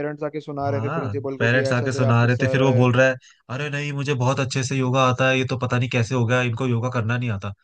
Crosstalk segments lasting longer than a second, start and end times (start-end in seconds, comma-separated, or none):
0.7-2.9